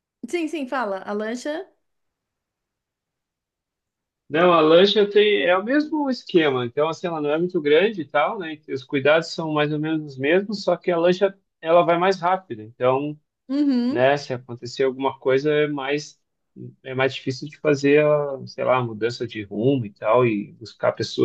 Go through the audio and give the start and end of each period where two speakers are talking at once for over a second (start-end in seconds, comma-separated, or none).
none